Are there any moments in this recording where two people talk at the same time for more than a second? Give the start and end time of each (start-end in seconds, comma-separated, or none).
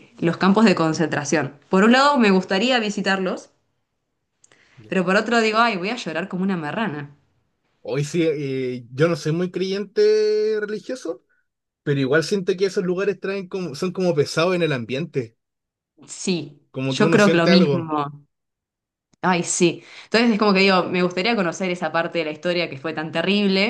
16.7-17.9